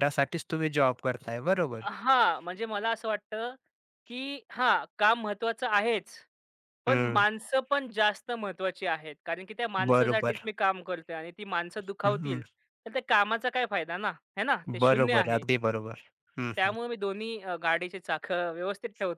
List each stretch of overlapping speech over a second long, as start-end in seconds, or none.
none